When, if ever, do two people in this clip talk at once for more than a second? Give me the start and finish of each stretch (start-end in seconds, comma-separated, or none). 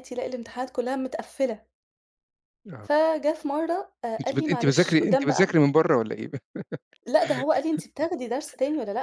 4.2-5.5